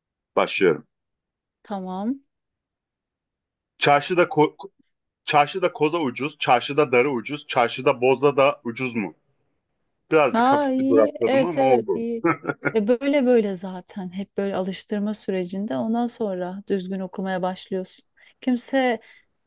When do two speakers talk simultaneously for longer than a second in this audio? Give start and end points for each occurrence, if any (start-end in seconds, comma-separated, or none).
10.3-12.0